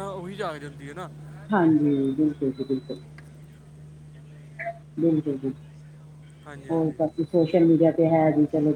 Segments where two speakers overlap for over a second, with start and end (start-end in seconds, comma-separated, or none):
none